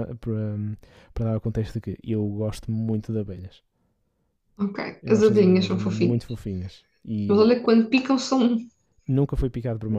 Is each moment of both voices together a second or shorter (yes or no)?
no